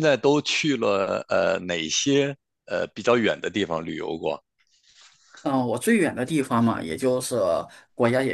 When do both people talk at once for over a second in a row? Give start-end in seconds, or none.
none